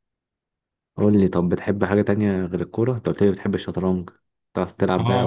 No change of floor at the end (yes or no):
no